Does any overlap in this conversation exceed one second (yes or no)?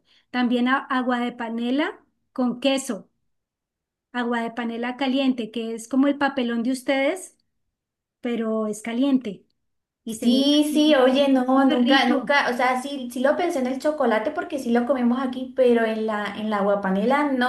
yes